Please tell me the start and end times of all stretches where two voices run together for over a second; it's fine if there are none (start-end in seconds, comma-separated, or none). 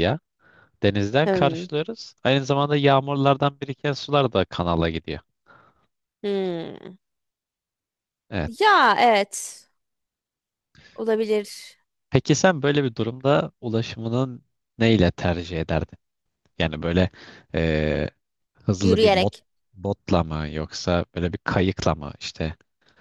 none